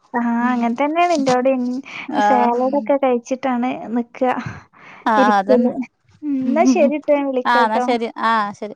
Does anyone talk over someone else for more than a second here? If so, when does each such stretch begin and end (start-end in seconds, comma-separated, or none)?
none